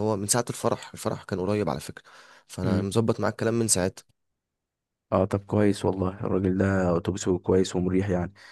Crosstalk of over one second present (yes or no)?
no